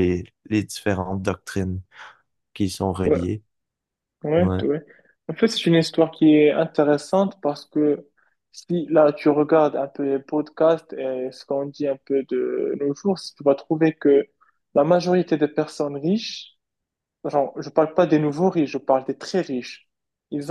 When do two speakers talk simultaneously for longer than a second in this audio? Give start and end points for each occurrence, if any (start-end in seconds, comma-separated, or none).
none